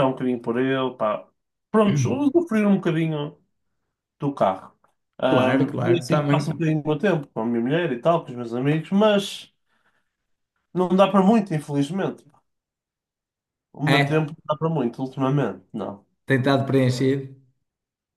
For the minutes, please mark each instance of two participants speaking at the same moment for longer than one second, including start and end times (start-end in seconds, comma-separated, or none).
5.3-6.6